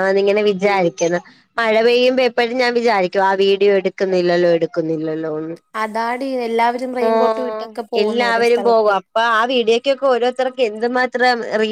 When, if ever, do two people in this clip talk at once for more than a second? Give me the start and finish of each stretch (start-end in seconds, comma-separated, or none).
none